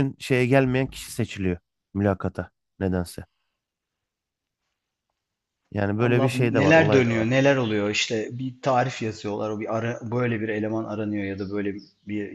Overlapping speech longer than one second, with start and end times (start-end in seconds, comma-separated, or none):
6.0-7.3